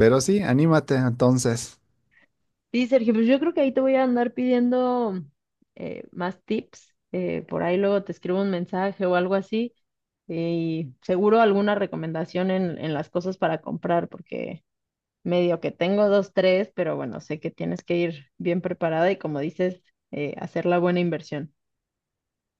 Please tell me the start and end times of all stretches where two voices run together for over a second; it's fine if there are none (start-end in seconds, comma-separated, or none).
none